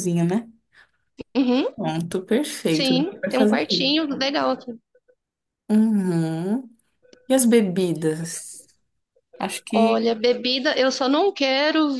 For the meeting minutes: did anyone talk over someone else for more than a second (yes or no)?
yes